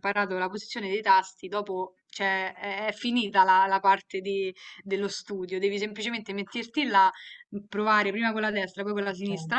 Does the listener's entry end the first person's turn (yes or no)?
no